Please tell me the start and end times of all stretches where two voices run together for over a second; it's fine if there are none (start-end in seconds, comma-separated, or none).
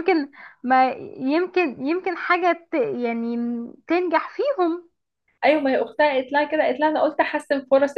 none